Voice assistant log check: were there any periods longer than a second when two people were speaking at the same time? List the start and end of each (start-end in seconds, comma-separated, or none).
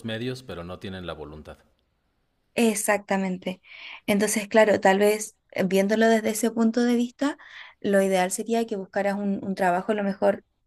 none